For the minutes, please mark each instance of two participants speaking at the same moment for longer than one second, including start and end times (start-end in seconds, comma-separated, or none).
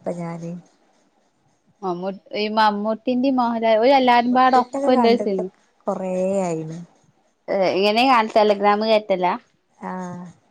4.0-5.4